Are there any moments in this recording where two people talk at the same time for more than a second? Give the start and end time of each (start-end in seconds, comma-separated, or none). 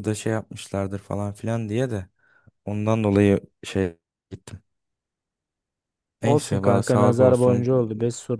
6.2-7.7